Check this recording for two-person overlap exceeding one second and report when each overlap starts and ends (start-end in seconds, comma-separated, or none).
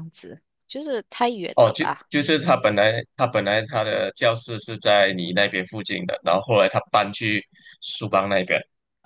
none